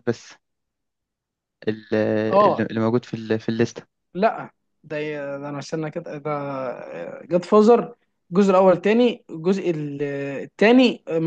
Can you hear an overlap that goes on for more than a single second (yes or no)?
no